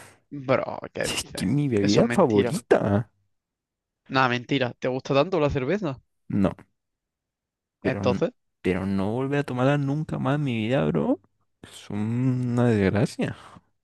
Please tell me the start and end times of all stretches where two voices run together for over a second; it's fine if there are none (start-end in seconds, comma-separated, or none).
1.1-2.6